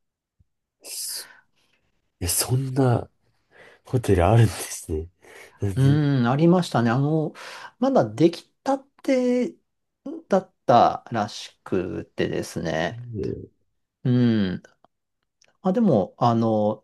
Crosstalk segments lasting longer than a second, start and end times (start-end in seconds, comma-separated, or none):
none